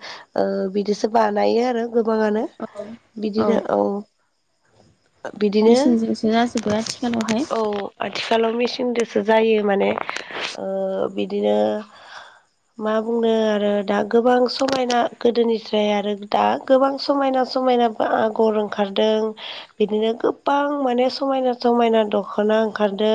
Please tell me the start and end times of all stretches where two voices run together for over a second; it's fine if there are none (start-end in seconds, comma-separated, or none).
none